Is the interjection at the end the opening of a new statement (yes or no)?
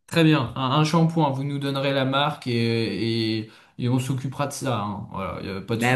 yes